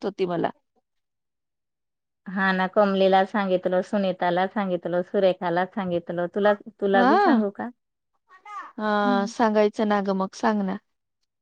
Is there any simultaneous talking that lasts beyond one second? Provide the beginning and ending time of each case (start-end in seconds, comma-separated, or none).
none